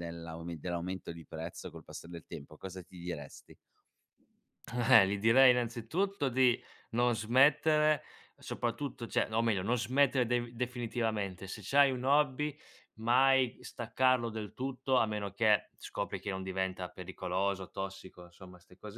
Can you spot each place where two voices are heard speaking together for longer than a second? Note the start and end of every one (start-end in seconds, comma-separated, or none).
none